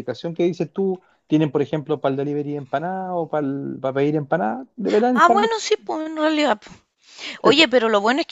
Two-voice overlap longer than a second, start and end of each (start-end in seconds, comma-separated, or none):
none